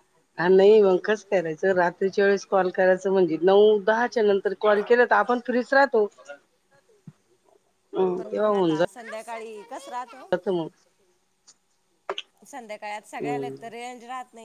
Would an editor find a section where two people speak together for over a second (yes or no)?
no